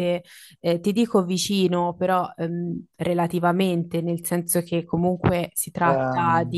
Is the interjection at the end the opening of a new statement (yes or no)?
no